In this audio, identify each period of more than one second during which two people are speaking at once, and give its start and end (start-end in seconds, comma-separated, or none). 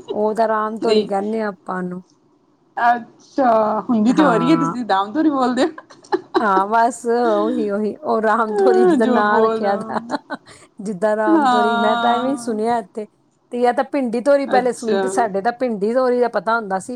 8.5-10.0, 11.4-12.6